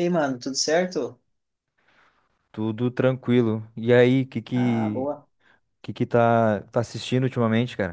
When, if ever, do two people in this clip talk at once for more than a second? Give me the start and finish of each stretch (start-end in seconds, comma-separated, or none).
none